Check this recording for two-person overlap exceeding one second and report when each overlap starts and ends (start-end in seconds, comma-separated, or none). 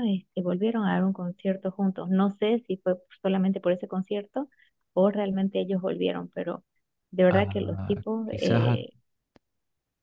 7.3-8.8